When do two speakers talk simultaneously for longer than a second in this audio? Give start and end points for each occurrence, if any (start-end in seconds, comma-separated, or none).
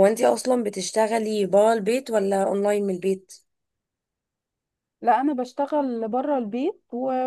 none